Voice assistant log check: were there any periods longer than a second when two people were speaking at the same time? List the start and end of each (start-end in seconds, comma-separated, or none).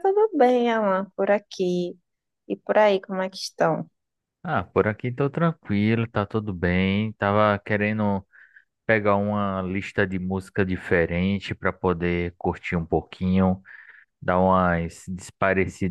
none